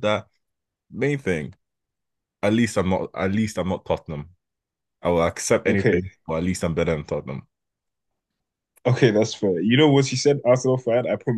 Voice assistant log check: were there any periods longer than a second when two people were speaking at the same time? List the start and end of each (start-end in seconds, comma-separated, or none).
none